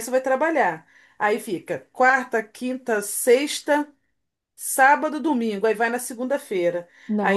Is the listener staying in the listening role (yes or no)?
yes